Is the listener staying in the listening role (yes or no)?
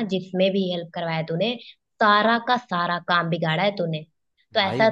yes